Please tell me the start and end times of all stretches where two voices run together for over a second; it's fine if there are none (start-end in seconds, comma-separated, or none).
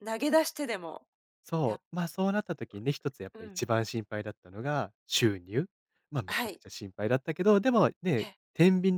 none